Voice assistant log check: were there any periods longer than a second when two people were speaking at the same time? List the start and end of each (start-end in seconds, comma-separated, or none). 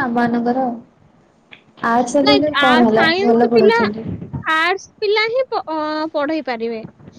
2.3-3.8